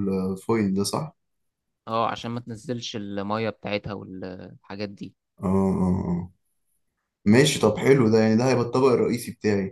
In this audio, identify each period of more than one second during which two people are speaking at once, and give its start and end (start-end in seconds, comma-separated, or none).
none